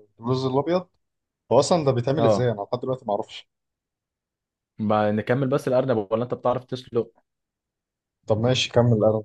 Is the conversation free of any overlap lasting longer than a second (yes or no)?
yes